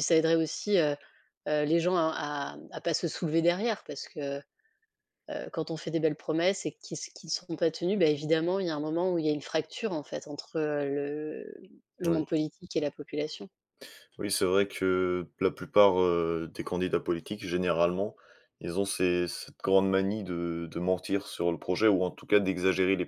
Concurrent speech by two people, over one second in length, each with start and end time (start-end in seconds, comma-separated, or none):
none